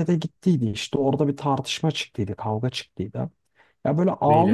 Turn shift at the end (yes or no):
no